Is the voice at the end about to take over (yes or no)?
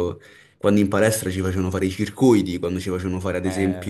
no